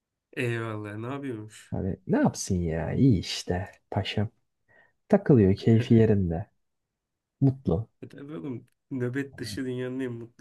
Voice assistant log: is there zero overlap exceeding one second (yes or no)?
yes